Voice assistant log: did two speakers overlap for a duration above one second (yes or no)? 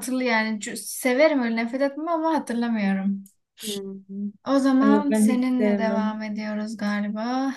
yes